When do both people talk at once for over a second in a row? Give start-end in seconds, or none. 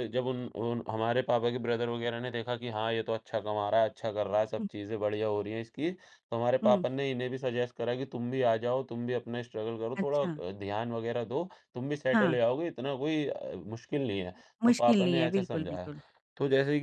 14.6-15.9